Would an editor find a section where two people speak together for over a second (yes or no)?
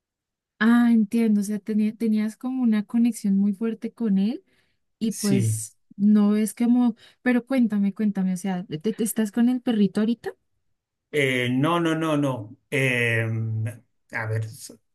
no